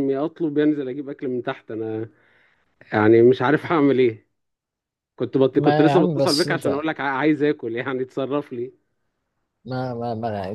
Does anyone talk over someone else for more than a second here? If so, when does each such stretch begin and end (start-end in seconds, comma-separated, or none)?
5.6-6.9